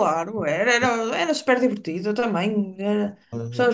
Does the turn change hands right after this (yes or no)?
no